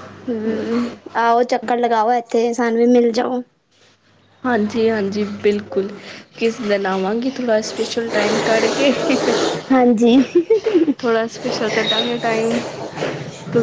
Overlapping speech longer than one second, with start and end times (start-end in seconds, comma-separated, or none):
none